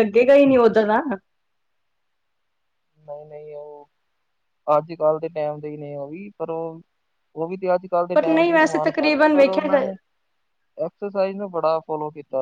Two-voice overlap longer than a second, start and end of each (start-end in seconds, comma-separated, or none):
8.1-9.9